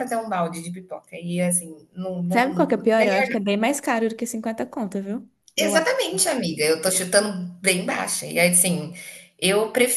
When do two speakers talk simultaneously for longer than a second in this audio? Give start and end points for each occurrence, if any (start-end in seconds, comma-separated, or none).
none